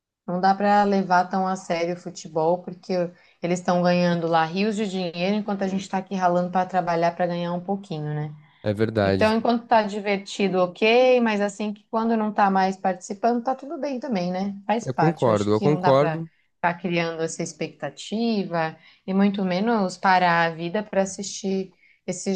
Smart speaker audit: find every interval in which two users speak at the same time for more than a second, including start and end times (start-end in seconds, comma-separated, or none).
14.8-16.3